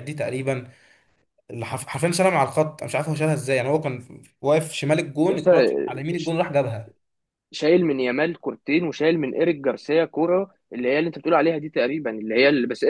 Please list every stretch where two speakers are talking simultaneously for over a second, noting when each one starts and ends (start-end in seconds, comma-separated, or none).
none